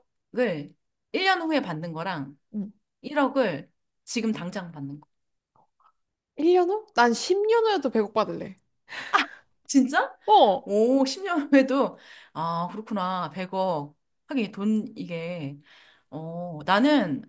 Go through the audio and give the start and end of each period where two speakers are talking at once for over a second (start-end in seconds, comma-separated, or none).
none